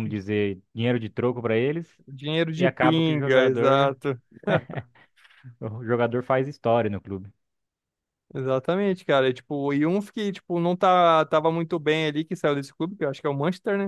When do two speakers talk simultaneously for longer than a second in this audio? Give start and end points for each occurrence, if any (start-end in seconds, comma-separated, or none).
2.5-4.0